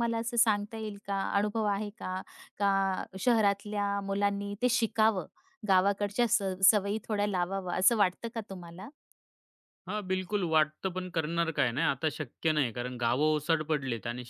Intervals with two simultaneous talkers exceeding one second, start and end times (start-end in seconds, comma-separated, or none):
none